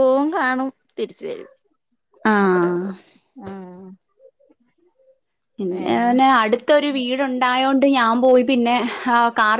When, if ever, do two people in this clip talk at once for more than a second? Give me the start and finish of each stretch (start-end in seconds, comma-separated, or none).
none